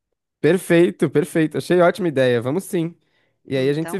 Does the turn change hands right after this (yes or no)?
no